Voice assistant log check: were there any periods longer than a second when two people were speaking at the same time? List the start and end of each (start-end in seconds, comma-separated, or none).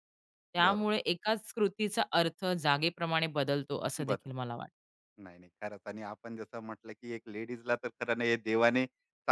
none